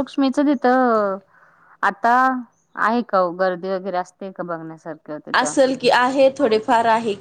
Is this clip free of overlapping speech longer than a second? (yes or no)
yes